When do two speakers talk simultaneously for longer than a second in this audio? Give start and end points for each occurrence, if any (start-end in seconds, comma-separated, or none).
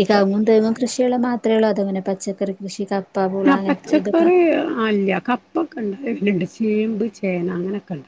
none